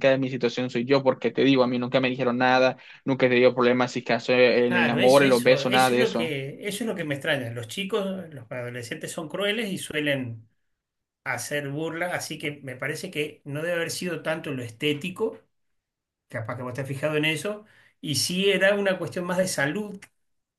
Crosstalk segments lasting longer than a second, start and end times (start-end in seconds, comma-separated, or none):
4.6-6.3